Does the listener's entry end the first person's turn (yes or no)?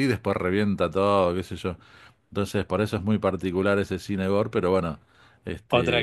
yes